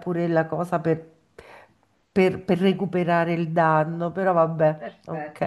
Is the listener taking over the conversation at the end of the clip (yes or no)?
yes